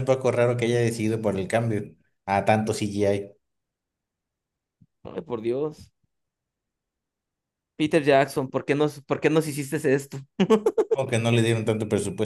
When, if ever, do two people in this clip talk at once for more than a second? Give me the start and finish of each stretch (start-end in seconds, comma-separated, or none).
none